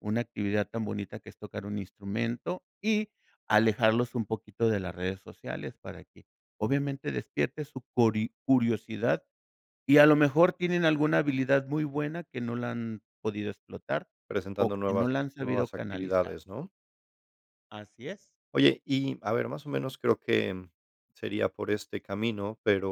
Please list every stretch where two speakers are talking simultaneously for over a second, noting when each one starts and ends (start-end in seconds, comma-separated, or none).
14.6-16.4